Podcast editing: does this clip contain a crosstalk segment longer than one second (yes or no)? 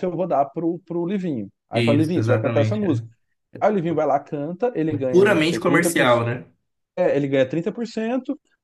yes